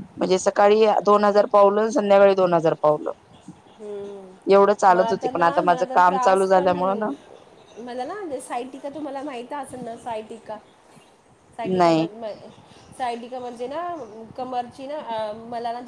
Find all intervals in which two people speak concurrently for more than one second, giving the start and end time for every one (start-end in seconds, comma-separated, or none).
4.9-6.7